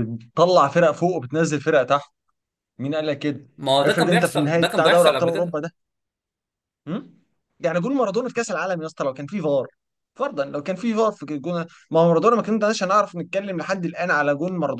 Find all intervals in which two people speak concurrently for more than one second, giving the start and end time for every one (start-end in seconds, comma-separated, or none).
3.8-5.6